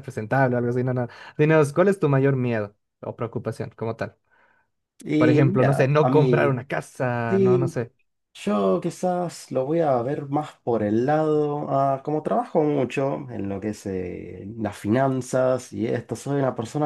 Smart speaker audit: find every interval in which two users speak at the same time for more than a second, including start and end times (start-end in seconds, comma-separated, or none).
5.2-6.6